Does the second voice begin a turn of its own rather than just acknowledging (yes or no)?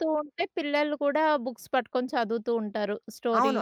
yes